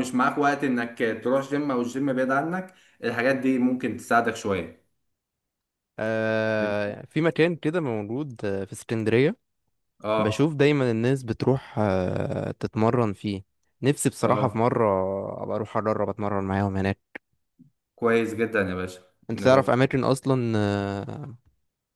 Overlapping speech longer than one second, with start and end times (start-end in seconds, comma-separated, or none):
none